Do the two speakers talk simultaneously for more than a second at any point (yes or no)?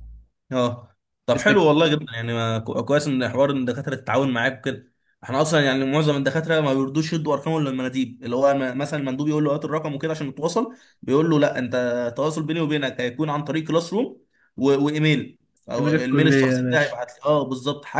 yes